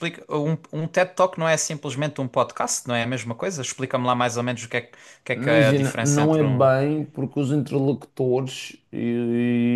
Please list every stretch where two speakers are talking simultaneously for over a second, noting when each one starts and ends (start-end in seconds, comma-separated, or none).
5.3-6.7